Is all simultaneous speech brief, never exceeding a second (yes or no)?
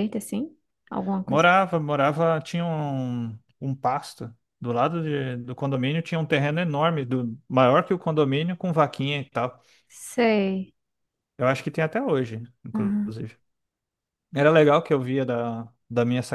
yes